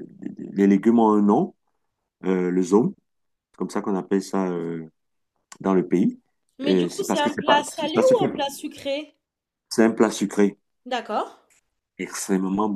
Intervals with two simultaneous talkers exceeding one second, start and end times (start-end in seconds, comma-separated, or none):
6.6-8.2